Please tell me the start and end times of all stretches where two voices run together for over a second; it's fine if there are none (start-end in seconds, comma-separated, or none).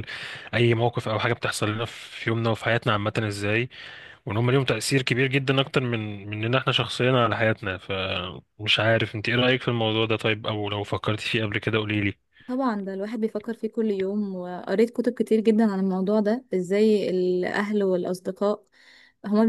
none